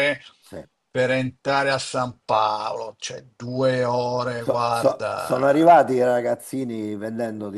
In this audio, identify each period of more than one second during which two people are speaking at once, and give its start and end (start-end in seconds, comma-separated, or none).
4.4-5.9